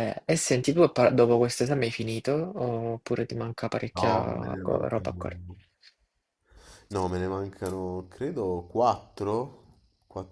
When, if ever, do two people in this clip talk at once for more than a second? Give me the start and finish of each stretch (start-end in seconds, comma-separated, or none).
3.9-5.2